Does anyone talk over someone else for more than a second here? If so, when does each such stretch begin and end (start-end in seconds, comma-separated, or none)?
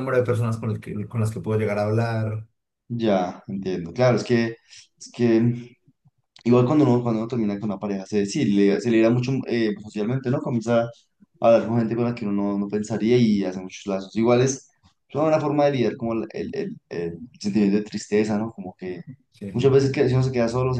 none